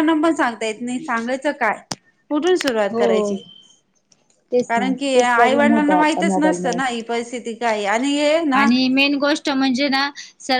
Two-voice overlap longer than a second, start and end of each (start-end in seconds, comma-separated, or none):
4.7-6.7